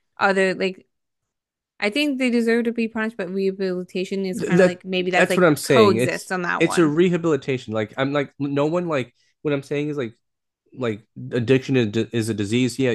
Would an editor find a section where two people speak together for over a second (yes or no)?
yes